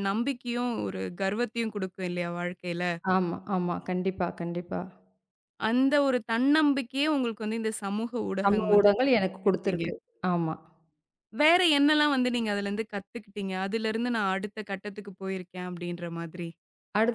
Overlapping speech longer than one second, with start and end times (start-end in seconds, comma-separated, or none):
8.4-9.8